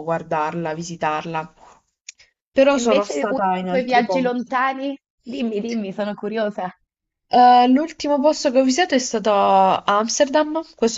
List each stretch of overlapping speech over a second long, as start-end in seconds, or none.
2.8-4.5